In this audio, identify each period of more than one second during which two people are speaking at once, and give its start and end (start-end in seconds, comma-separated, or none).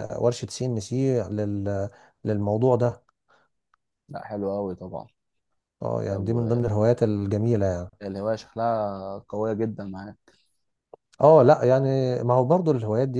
none